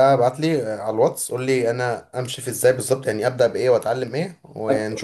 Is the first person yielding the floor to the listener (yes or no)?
yes